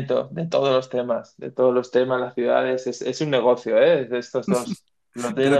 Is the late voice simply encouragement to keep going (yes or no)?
no